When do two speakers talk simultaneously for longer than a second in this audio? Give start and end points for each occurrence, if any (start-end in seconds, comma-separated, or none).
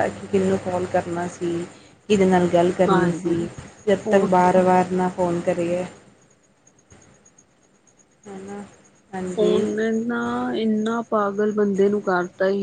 none